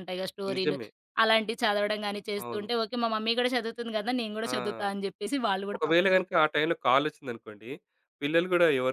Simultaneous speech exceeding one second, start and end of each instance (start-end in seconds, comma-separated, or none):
none